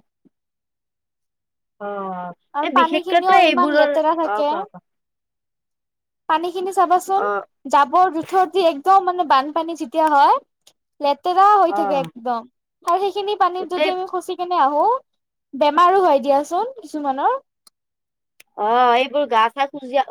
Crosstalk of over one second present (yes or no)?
yes